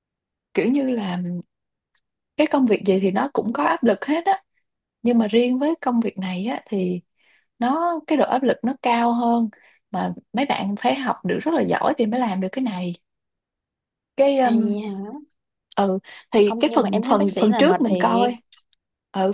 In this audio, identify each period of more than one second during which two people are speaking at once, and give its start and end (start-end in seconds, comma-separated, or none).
16.4-18.3